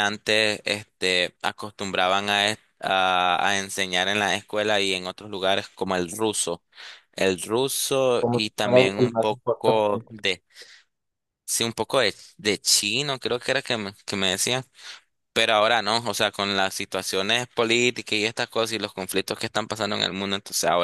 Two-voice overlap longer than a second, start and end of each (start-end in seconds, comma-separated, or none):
8.2-10.0